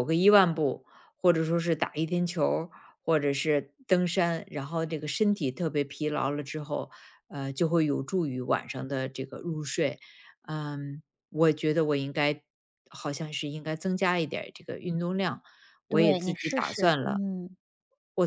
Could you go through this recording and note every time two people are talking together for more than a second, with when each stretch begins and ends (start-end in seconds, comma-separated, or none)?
15.9-17.2